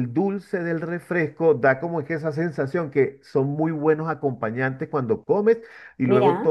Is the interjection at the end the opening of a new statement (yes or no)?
no